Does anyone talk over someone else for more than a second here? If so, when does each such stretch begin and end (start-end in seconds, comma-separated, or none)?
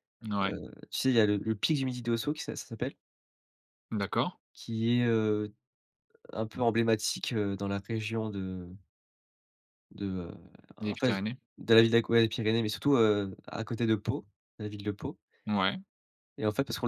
none